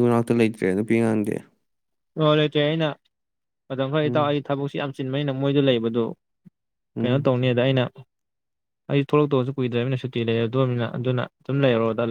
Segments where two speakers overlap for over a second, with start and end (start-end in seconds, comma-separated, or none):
none